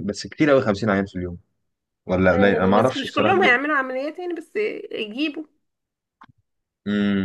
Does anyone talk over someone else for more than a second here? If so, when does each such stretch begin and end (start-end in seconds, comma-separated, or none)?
2.3-3.6